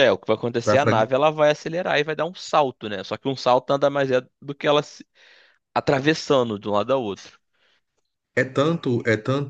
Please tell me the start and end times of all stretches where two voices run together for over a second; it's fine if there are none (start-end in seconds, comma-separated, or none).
none